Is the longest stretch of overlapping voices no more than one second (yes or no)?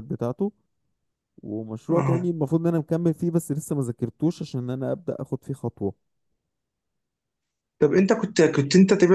yes